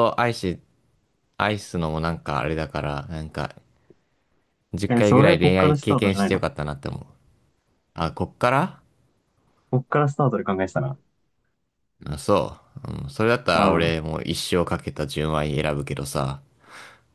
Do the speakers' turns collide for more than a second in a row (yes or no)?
yes